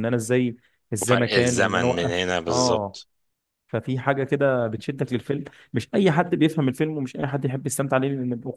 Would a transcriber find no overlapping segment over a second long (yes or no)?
no